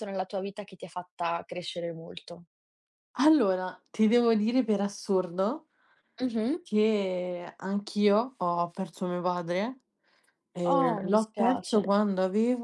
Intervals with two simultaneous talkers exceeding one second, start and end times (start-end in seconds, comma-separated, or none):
10.6-11.9